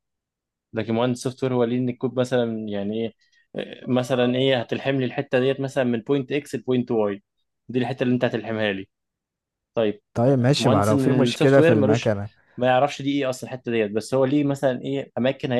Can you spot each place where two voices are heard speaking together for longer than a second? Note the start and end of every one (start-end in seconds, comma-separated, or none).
10.5-12.1